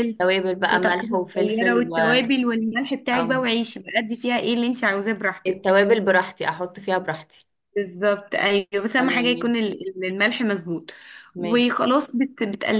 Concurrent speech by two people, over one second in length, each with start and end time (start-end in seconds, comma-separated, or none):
0.7-2.0